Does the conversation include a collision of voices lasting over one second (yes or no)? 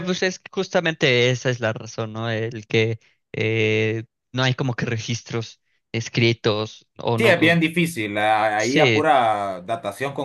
no